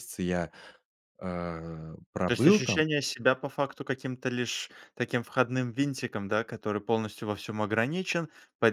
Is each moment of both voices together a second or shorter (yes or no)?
yes